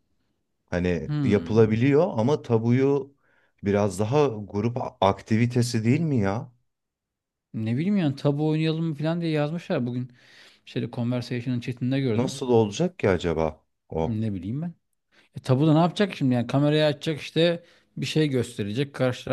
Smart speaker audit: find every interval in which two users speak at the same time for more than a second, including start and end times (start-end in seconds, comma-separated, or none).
none